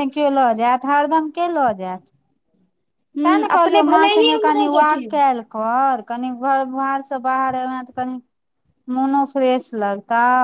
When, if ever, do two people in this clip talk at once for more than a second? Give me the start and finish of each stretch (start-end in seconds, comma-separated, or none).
3.2-5.2